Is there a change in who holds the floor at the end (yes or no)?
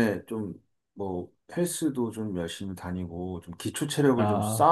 no